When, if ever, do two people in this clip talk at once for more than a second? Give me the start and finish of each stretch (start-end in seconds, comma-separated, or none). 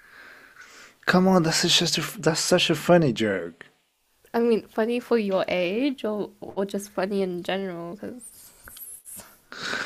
none